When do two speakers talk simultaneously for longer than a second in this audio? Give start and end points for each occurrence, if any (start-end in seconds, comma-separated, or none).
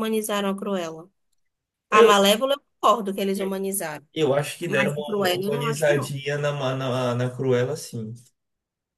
4.7-6.1